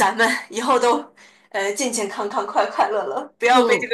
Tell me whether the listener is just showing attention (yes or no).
no